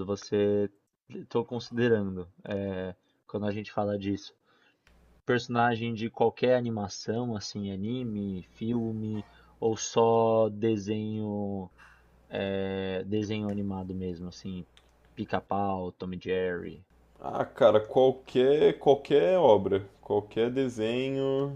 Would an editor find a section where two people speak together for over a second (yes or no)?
no